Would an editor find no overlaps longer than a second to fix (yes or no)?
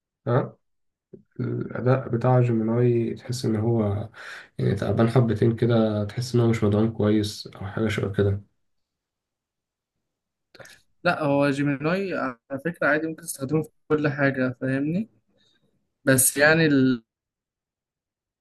yes